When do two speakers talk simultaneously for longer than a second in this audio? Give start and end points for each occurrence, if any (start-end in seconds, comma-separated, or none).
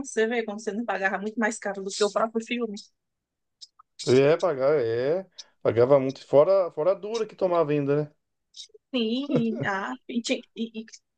none